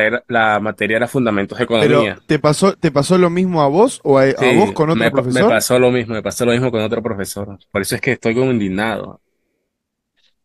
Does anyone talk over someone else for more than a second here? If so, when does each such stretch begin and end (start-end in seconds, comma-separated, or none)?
4.4-5.6